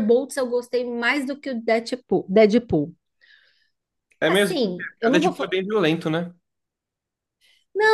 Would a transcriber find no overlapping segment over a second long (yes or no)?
no